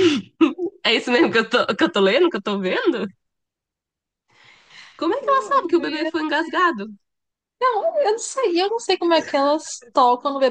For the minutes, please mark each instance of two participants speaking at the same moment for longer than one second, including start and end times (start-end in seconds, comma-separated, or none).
none